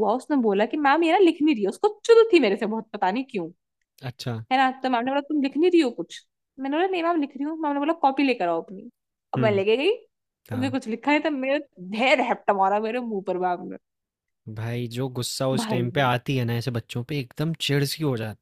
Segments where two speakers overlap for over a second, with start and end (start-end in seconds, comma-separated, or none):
none